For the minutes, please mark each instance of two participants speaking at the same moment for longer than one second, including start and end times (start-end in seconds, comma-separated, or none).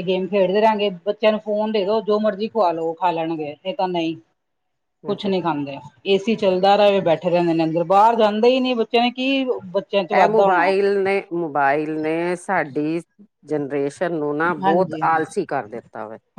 none